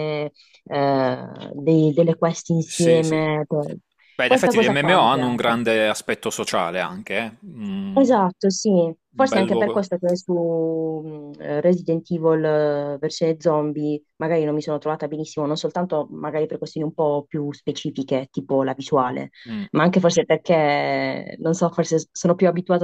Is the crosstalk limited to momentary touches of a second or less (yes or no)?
no